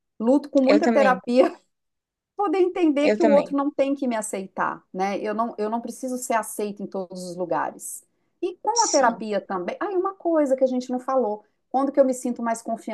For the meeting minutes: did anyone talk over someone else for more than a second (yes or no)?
no